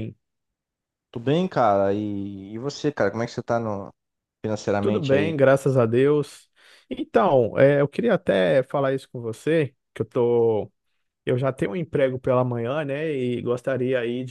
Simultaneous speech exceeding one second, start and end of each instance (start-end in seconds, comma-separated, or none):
none